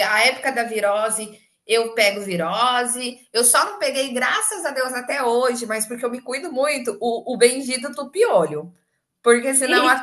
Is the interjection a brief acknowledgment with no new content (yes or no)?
yes